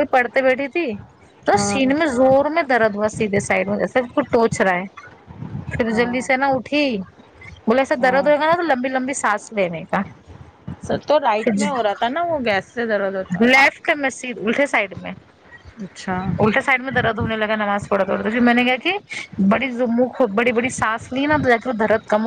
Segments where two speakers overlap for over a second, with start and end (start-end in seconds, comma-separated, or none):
none